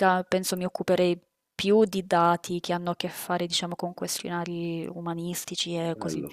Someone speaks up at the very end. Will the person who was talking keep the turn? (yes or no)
no